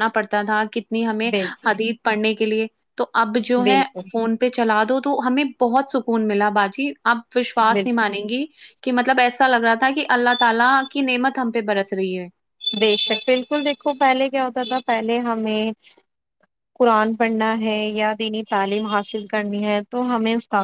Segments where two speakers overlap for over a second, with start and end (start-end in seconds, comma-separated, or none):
none